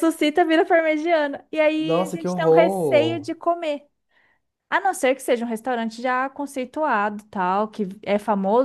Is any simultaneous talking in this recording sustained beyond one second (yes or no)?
yes